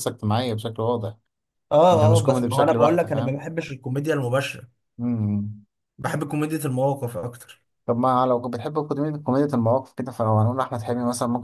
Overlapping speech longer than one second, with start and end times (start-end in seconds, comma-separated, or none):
1.9-3.5